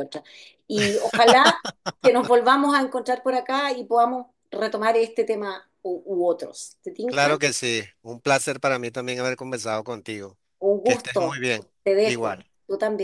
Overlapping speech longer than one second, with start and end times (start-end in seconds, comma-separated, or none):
none